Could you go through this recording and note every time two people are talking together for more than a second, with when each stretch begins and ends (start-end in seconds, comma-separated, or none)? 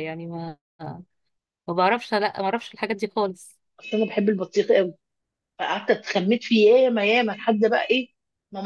none